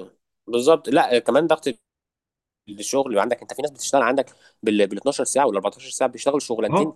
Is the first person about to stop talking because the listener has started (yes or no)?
yes